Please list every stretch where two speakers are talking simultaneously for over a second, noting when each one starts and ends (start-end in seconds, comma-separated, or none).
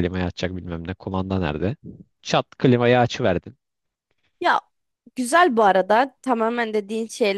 none